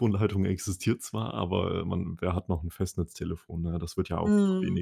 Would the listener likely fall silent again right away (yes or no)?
no